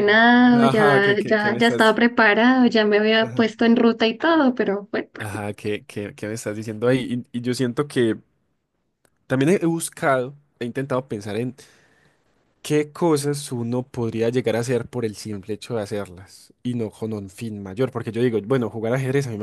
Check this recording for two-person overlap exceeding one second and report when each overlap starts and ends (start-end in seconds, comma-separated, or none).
0.6-2.0